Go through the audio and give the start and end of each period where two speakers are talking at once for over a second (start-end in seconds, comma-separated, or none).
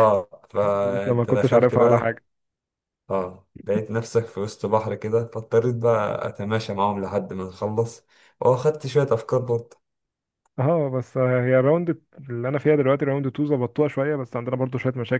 0.8-2.2